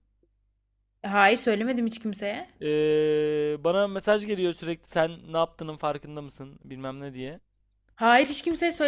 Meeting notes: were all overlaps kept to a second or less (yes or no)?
yes